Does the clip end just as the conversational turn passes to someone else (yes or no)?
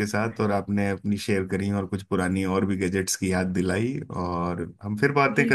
yes